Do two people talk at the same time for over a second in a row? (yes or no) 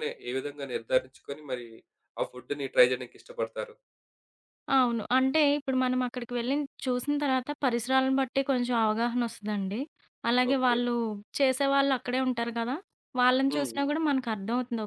no